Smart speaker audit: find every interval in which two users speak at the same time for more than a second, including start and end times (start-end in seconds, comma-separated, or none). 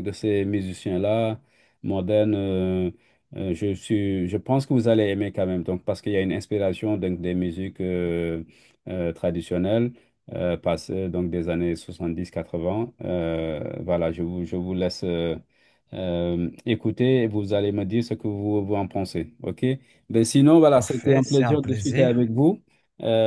20.7-22.3